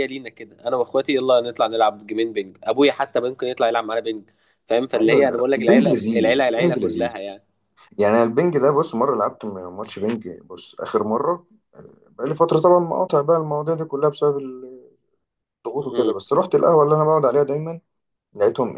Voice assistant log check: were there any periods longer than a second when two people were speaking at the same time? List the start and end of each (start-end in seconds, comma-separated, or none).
5.0-7.1